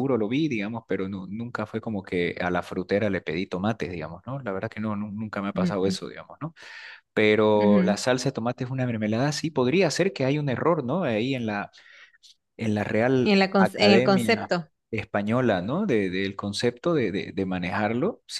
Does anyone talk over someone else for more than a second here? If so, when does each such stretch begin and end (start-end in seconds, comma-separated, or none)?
13.2-14.5